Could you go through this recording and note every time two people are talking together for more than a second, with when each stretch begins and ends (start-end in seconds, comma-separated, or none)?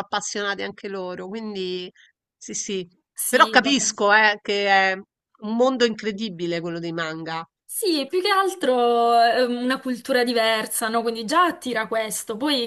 none